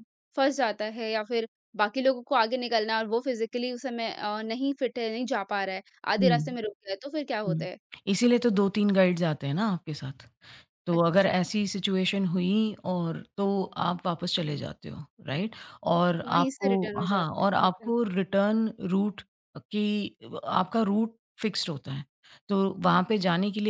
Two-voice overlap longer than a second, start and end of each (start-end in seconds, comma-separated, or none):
16.3-17.9